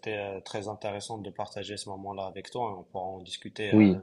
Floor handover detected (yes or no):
yes